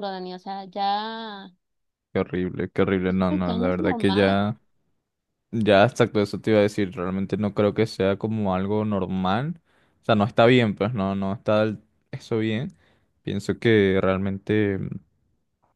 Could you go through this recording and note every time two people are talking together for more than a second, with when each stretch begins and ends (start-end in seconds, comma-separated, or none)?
3.1-4.4